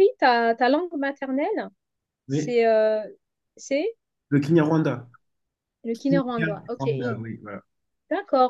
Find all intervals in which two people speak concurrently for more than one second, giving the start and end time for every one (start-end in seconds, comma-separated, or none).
6.0-7.2